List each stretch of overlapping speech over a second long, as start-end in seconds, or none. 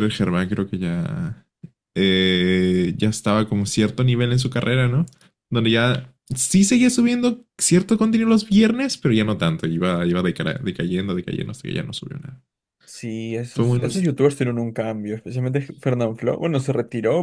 none